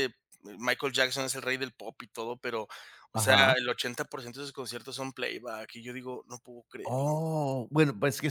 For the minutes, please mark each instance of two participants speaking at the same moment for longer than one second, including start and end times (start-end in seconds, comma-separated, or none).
none